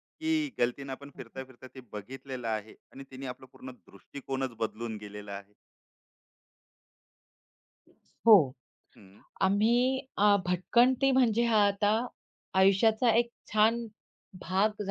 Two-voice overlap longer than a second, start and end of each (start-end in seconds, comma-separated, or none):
none